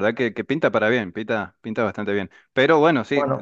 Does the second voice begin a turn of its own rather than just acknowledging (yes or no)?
no